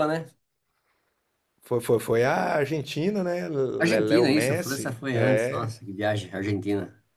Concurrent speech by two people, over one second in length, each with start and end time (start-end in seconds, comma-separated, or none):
3.8-5.7